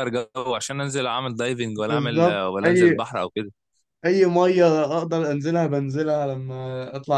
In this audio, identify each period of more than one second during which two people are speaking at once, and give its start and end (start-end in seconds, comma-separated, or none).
1.8-3.0